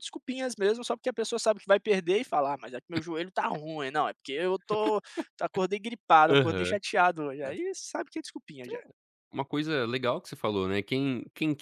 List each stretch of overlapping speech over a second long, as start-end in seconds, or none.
none